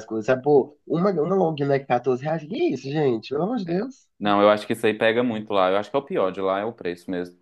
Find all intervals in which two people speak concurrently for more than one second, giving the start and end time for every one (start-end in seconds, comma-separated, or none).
none